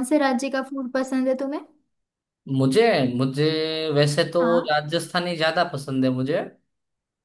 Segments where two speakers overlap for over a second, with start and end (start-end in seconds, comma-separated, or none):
none